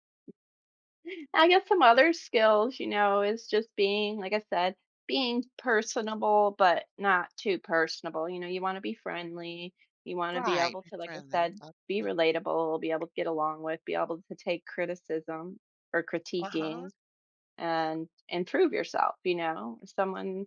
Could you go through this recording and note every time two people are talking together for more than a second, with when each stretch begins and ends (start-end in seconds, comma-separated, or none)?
10.3-12.2